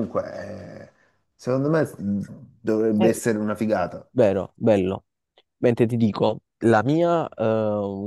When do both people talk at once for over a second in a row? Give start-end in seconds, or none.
none